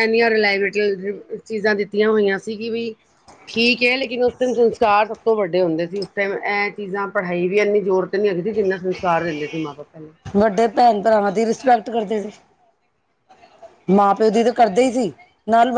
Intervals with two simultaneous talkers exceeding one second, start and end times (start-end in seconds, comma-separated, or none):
none